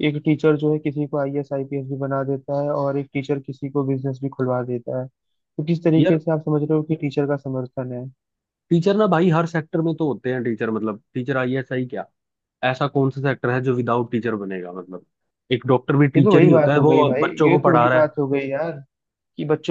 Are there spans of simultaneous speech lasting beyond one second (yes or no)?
yes